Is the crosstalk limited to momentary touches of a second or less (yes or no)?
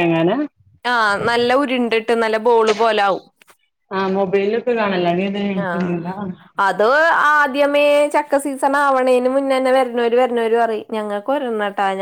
yes